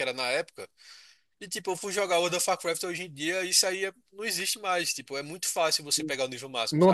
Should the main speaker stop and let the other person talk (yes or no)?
yes